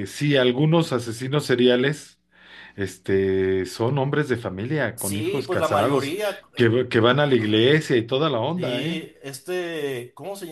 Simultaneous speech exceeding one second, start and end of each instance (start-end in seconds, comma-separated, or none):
4.9-6.2